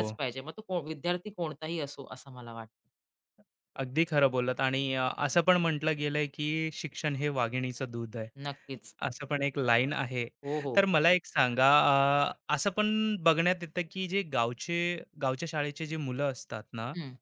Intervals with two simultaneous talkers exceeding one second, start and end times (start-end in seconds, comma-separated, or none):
none